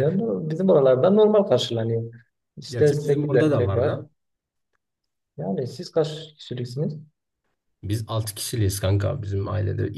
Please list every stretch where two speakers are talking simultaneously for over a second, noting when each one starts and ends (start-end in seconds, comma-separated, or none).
2.7-4.0